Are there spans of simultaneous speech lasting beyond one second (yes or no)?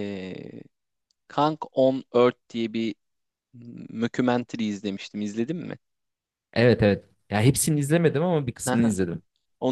no